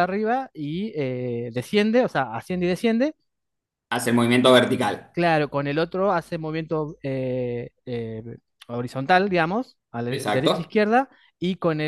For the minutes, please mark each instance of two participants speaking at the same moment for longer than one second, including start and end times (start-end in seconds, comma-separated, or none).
none